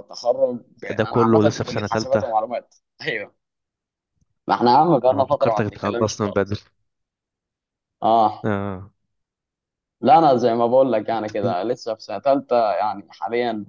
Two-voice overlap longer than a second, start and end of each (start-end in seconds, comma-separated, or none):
1.0-2.2, 5.1-6.6